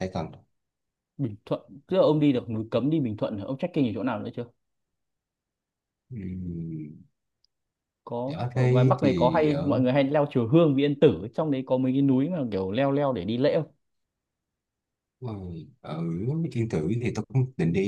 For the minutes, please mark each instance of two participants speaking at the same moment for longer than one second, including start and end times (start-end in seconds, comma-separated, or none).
8.4-9.7